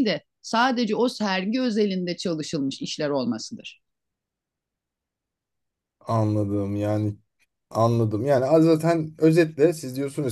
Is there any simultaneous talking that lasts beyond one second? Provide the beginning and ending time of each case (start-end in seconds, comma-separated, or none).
none